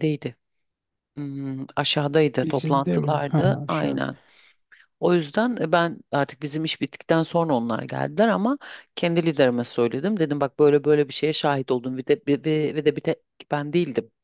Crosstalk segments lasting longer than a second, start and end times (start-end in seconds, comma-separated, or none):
2.4-4.1